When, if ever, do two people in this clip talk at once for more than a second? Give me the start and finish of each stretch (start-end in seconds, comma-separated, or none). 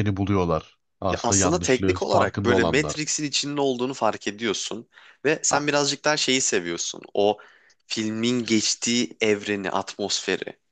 1.1-3.1